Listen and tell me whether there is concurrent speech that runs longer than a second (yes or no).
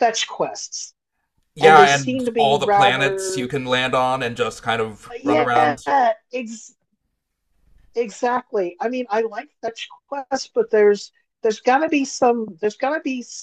yes